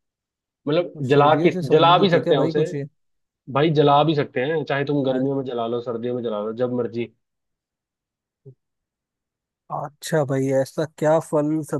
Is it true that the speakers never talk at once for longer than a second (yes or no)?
no